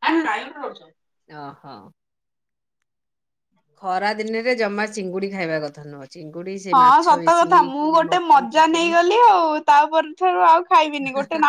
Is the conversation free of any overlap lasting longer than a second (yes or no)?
no